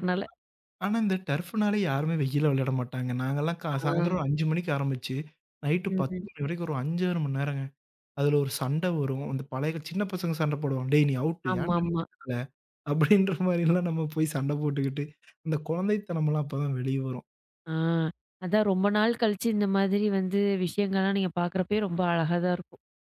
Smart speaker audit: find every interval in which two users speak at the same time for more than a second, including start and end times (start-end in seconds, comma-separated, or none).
none